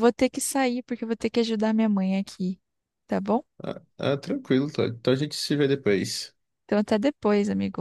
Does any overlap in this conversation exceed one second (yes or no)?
no